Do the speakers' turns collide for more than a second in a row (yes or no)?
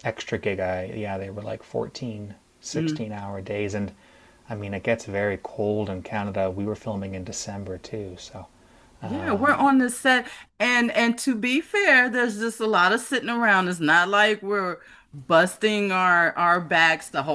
no